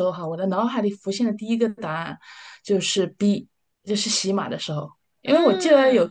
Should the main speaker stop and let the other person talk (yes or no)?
no